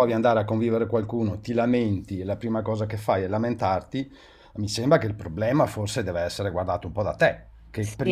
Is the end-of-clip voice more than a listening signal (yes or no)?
yes